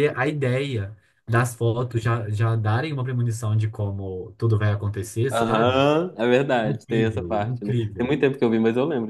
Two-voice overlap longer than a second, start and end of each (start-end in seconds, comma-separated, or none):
6.6-8.2